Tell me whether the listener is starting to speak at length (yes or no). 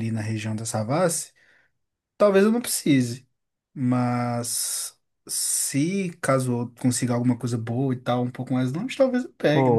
yes